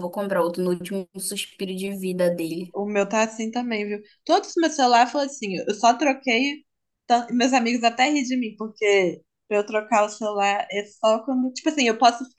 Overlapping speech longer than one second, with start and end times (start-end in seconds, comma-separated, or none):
none